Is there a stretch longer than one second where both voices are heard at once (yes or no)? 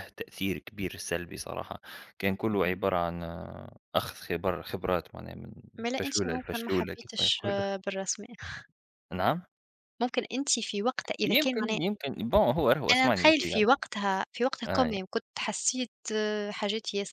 yes